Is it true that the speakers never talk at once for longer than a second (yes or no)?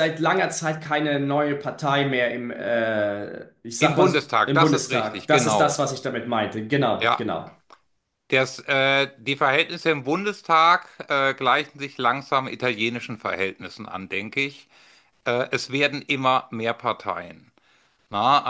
no